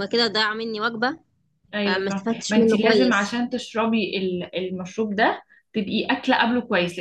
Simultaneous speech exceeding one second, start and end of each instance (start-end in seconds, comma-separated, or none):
1.9-3.4